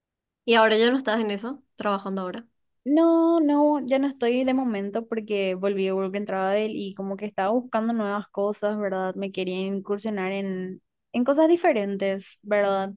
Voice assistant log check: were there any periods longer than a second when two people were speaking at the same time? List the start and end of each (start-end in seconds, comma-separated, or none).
none